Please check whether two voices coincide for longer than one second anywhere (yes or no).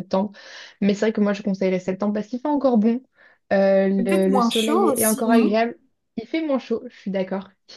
yes